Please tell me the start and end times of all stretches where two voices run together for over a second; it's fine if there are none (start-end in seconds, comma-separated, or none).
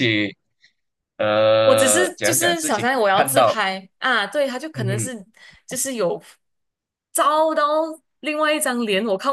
1.6-3.5